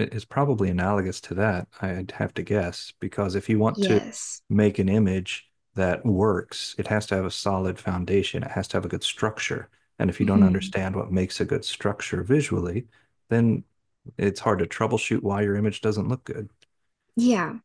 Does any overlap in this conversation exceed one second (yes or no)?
no